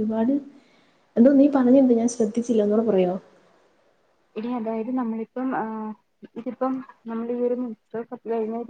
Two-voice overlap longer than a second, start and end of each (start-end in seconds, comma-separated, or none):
none